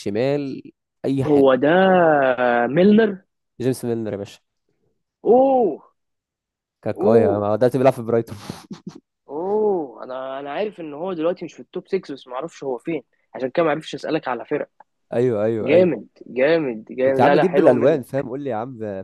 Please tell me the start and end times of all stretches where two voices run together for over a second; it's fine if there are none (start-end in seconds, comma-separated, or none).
17.0-18.2